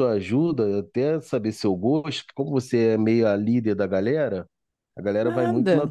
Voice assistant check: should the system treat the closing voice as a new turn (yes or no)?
yes